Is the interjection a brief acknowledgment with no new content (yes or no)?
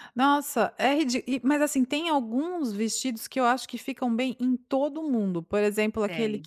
yes